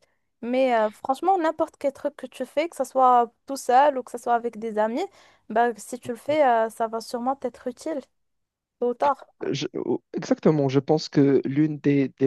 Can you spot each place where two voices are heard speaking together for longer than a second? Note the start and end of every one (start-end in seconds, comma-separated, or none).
none